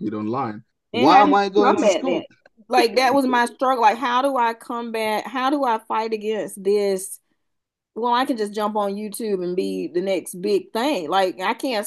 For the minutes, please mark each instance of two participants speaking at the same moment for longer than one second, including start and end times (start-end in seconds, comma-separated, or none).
0.9-2.2